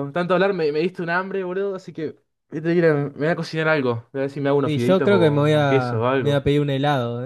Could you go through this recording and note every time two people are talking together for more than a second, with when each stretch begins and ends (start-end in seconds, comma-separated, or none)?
4.6-6.5